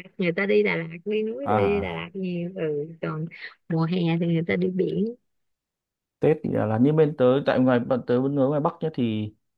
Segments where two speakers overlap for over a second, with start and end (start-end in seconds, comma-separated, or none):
none